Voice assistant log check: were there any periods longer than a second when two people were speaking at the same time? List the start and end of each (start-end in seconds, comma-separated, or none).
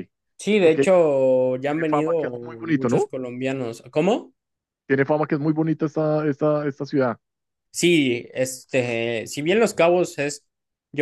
1.7-3.1